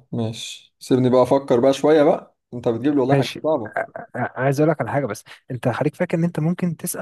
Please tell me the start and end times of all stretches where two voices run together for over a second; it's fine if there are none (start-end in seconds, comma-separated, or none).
none